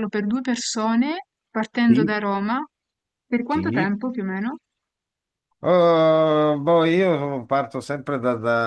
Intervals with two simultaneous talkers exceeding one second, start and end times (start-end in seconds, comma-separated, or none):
none